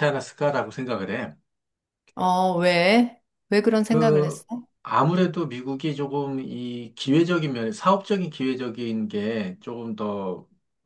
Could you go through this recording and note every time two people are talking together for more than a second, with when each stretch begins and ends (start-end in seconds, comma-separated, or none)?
none